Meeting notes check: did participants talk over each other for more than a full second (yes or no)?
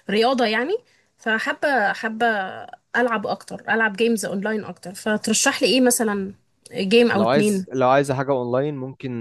no